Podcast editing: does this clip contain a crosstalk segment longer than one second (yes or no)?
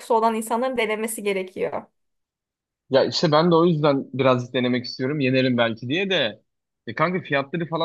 no